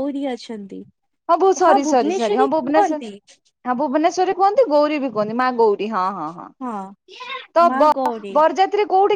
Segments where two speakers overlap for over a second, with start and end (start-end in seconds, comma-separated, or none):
1.9-3.1